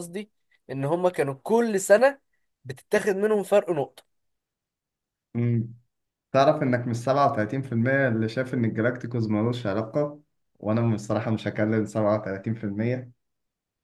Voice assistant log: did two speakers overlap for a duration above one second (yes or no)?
no